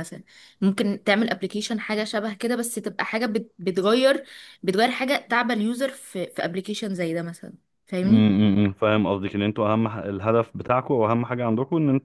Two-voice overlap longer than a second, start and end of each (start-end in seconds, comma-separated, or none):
none